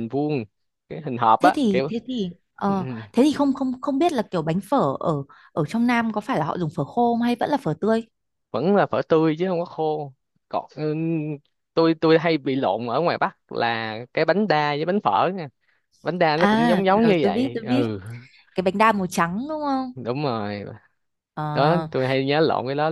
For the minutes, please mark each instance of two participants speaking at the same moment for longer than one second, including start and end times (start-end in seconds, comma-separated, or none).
16.4-17.9